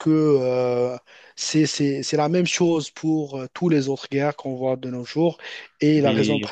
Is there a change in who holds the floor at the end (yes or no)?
no